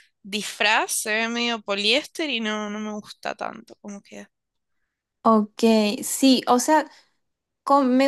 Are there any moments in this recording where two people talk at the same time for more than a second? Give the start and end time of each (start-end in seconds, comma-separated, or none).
none